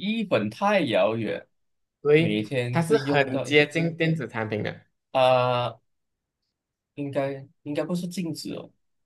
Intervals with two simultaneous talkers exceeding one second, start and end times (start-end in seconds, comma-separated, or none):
2.2-3.5